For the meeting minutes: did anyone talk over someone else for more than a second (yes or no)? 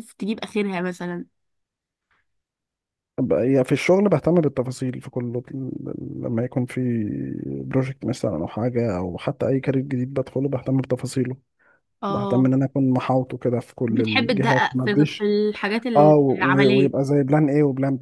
yes